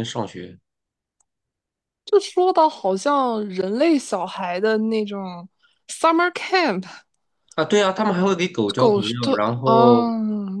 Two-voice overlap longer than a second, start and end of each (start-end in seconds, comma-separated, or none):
8.8-10.1